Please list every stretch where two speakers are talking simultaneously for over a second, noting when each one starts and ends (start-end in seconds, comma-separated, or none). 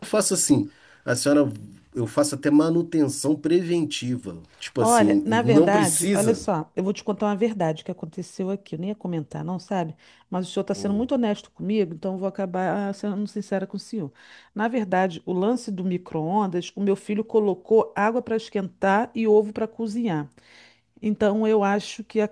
4.8-6.4